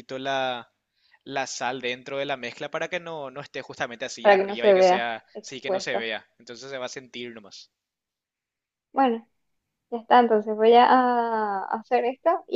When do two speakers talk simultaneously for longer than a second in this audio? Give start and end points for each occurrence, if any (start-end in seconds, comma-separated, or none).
4.2-6.1